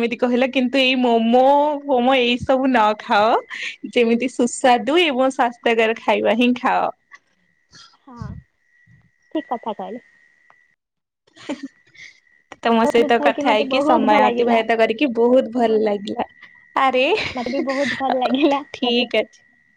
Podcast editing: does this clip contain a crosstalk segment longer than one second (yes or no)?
yes